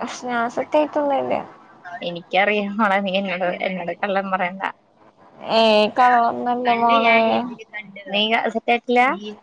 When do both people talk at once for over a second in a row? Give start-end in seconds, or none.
none